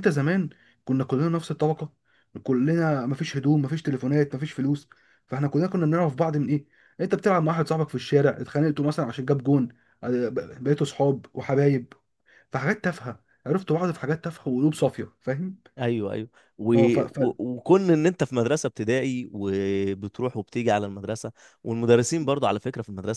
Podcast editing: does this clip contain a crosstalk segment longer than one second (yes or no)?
no